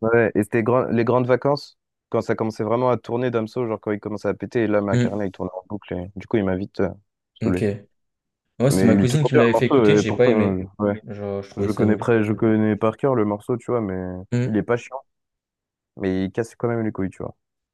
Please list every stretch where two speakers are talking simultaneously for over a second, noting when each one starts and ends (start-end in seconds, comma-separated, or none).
8.7-10.6